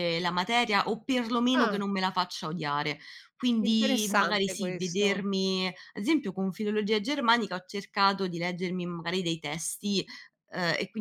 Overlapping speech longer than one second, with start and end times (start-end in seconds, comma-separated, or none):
3.6-5.3